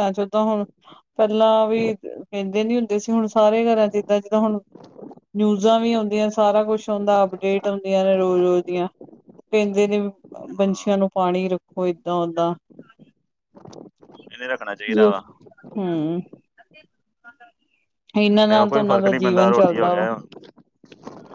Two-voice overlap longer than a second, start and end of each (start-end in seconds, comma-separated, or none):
18.4-20.1